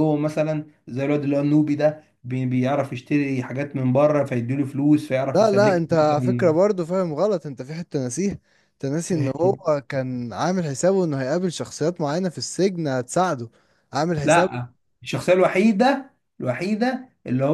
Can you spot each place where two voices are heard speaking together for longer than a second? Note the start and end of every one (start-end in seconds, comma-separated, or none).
5.3-6.5